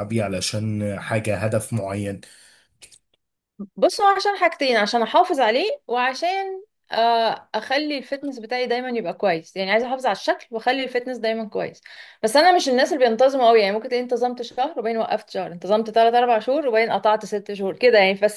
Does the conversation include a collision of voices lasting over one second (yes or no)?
no